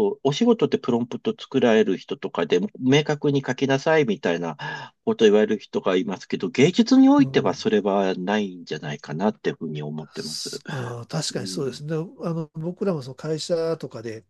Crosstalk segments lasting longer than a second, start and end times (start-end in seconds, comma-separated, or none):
none